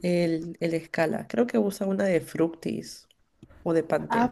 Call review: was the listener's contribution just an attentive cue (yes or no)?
no